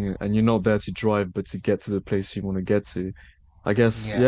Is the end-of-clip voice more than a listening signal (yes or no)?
no